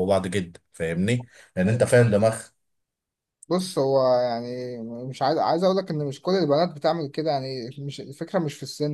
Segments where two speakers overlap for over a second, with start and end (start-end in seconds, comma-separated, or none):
none